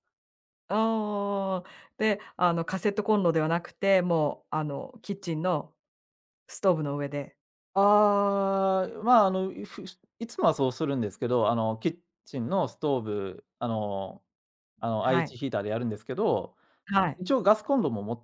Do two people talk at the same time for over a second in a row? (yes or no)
no